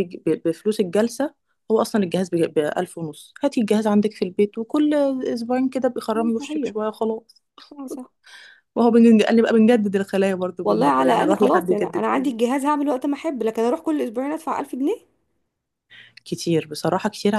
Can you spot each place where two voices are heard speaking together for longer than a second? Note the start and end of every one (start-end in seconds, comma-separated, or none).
10.6-12.3